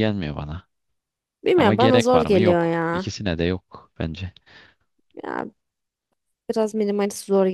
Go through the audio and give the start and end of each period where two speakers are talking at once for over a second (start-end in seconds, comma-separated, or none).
1.6-3.1